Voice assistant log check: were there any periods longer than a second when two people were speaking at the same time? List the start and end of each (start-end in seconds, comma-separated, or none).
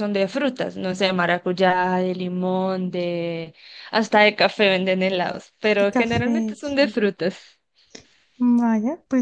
5.8-7.0